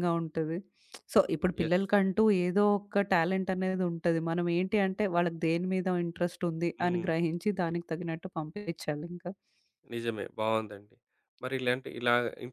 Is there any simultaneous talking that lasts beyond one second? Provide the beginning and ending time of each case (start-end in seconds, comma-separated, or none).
none